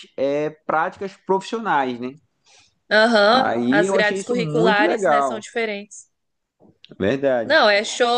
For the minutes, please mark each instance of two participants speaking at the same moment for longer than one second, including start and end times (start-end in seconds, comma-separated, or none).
3.3-5.4